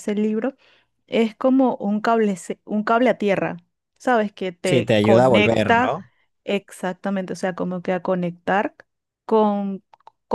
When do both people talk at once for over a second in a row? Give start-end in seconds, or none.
4.6-6.0